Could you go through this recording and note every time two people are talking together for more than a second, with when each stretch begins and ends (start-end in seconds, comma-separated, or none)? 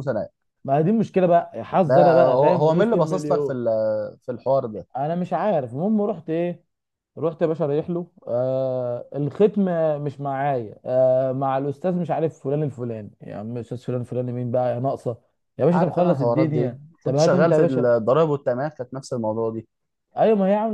1.9-3.6, 15.7-17.9